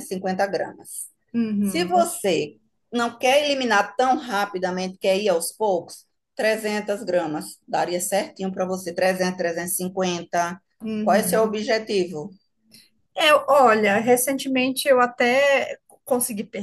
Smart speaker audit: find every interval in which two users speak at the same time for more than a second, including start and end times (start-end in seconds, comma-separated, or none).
none